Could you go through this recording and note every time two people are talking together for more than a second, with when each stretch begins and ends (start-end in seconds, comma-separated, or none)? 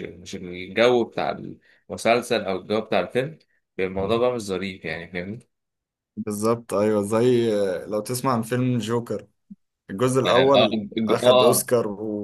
10.2-11.7